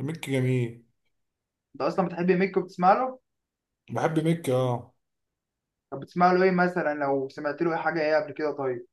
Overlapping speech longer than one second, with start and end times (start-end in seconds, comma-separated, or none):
none